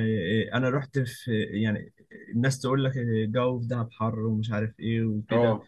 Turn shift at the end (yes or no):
no